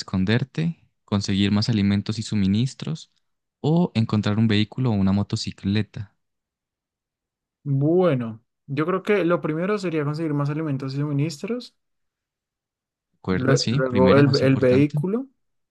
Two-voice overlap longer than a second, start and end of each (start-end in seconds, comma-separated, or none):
13.3-15.0